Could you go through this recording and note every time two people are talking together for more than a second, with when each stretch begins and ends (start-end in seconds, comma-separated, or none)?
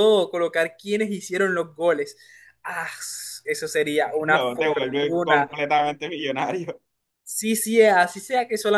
4.2-5.5